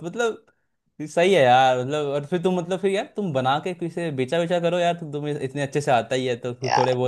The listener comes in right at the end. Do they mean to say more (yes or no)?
no